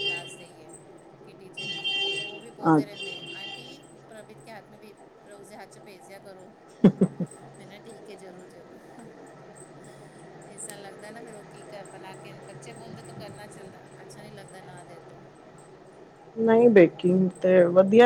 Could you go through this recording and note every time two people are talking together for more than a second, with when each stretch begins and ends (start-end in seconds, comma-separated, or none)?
none